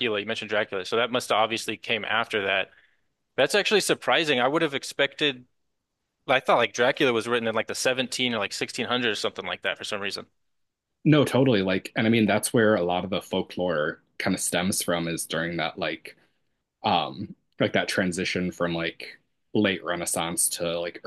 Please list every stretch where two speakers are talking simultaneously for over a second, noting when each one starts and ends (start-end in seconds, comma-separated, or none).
none